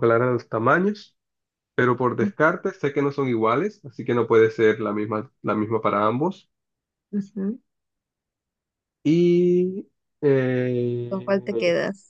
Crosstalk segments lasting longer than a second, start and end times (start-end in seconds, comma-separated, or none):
none